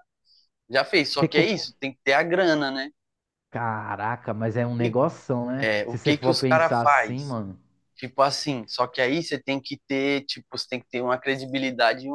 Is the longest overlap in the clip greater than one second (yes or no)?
yes